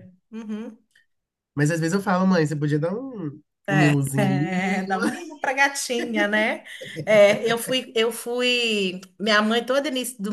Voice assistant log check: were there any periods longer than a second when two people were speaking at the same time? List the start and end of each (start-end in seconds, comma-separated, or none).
none